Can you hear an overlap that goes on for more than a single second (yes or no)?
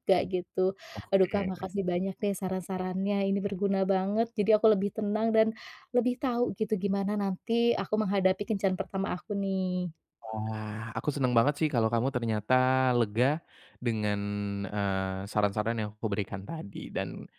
no